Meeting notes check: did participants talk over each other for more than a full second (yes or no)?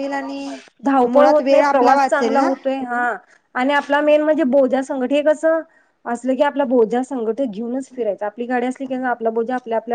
yes